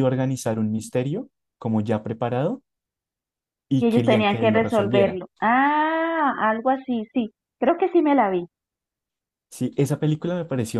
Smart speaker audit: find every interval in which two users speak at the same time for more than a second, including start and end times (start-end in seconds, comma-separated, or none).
3.8-5.2